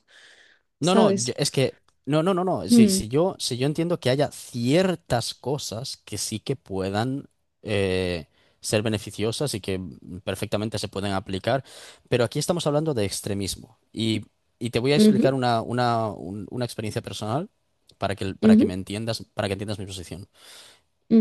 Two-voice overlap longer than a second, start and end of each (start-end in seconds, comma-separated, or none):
none